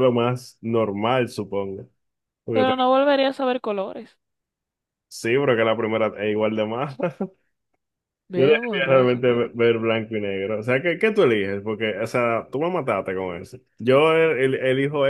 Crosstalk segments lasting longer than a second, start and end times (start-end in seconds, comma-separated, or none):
8.3-9.7